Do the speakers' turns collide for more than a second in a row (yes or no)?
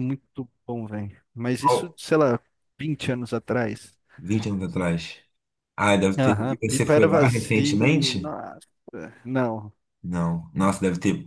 yes